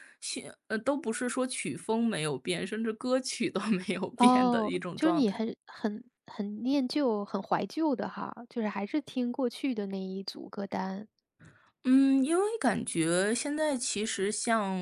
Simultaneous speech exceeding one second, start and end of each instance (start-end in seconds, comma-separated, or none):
4.2-5.4